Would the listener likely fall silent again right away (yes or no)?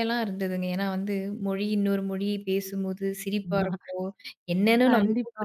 yes